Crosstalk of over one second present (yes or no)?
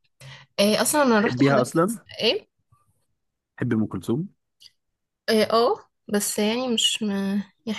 no